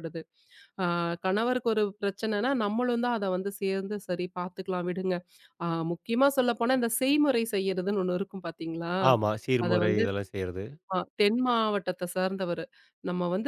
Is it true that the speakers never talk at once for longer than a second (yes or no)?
yes